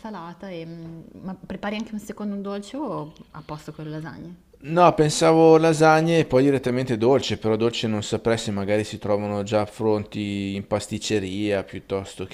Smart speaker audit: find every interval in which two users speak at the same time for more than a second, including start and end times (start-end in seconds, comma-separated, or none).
none